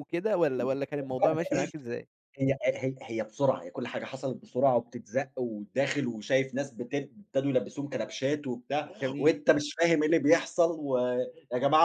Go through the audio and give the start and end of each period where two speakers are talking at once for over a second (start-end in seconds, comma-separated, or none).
none